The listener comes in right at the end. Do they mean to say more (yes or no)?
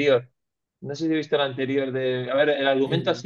no